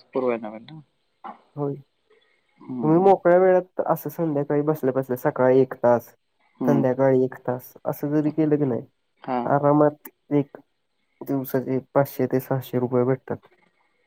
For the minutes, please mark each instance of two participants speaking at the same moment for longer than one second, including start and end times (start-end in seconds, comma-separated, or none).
none